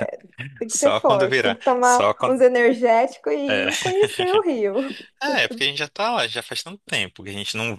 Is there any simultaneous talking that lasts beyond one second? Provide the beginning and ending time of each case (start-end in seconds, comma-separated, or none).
0.7-2.4